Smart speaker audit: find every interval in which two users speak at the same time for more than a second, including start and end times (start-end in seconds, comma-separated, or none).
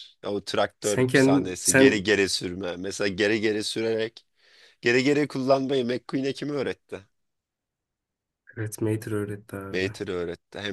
0.8-2.1